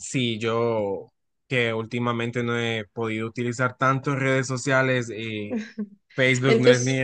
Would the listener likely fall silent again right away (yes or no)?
yes